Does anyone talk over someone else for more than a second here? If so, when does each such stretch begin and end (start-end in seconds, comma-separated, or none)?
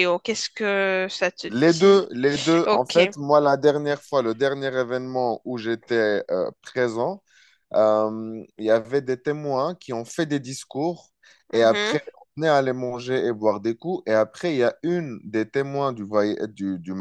none